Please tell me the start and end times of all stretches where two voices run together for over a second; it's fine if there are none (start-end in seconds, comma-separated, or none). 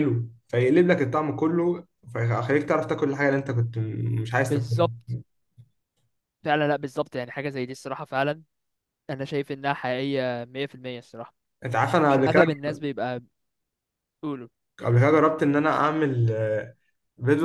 none